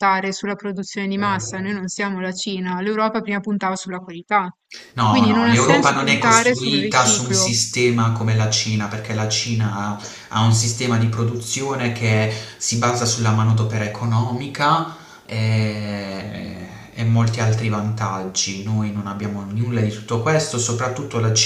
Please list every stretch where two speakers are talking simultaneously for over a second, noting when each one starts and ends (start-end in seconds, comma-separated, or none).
5.1-7.6